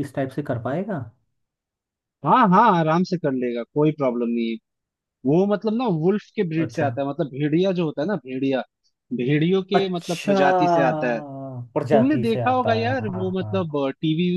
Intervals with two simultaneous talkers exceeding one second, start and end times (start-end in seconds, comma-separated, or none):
11.9-13.6